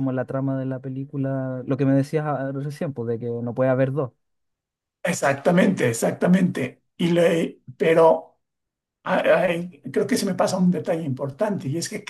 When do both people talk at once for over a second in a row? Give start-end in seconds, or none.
none